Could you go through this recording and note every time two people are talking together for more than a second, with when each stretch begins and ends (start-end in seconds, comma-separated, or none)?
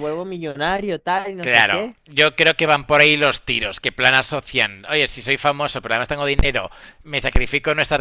none